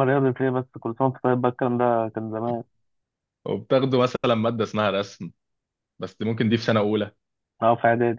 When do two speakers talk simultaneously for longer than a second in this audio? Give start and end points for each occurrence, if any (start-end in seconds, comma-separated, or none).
none